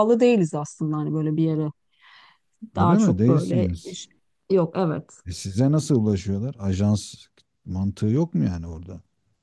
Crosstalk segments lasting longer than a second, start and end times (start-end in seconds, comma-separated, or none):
2.8-4.0